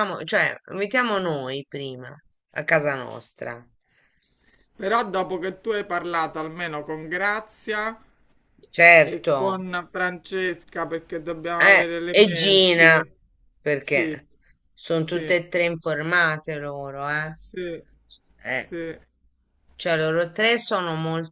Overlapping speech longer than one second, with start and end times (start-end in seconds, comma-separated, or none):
11.6-13.0